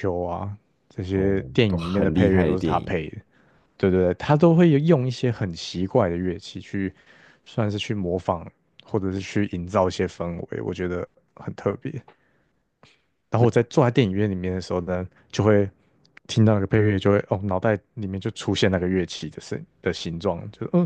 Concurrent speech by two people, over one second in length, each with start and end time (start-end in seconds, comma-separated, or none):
1.1-2.9